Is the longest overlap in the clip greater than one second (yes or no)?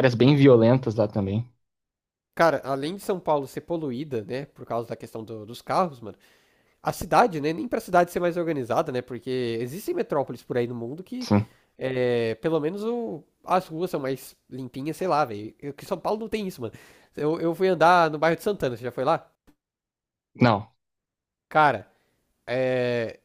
no